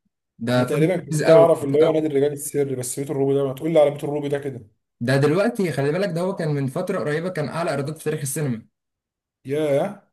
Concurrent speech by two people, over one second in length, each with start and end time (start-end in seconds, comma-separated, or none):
0.6-2.0